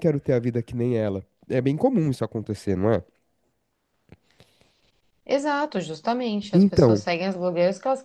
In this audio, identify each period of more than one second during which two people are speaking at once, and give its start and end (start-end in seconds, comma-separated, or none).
none